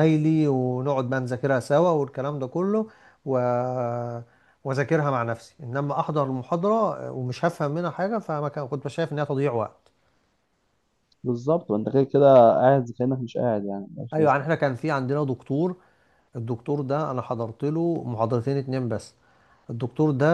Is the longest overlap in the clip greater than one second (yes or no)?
no